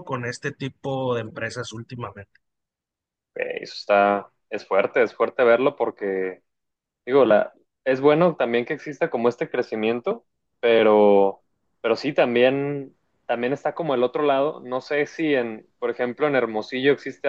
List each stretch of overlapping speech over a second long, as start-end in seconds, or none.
none